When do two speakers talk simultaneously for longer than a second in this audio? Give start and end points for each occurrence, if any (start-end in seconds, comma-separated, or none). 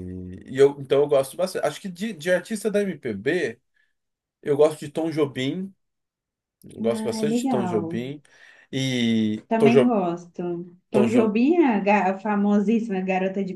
6.8-8.0